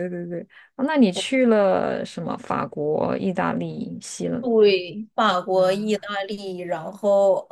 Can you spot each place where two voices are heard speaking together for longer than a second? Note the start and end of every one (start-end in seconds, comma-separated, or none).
none